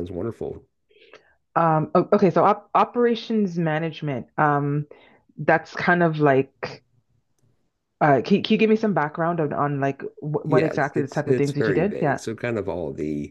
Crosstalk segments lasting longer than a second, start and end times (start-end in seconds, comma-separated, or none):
10.4-12.2